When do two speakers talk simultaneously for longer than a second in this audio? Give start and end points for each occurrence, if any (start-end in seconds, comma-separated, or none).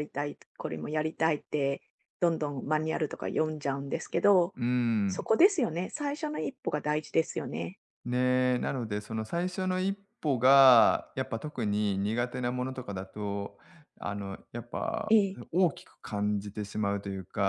none